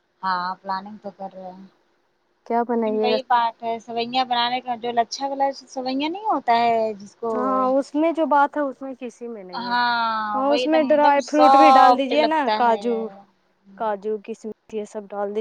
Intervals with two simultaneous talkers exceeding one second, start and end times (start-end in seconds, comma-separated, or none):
10.5-12.9